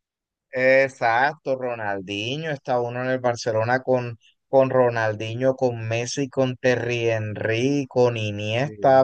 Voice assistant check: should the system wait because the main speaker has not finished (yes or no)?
yes